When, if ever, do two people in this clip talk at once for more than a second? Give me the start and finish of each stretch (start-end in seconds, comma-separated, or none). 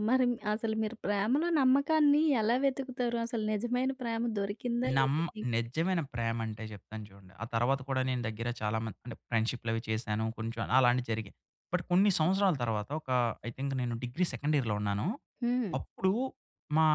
none